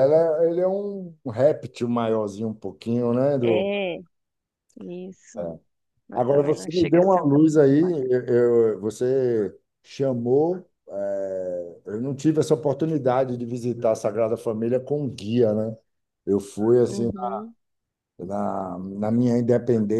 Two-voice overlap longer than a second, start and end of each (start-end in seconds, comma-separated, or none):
6.1-7.4